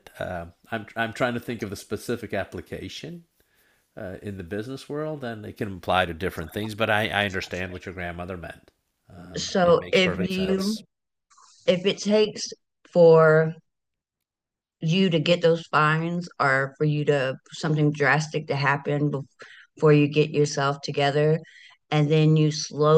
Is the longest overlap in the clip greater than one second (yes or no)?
yes